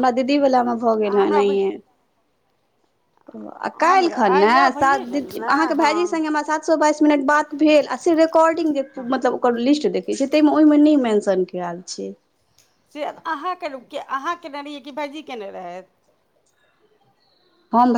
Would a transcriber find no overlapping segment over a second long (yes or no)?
no